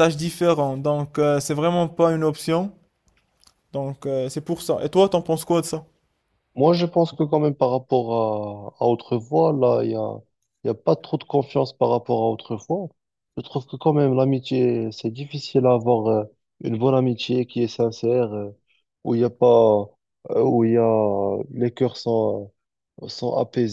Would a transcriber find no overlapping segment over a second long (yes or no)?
yes